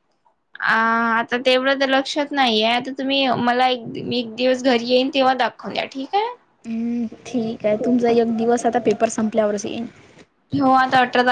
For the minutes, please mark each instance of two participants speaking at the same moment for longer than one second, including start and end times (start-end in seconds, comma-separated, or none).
none